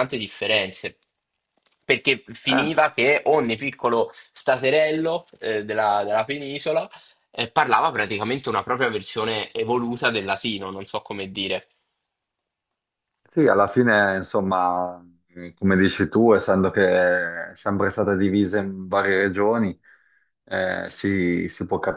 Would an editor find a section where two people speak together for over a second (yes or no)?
no